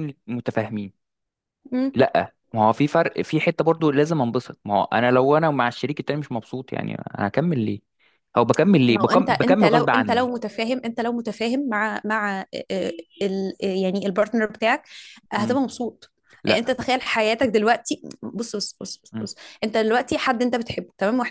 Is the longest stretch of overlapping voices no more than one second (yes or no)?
no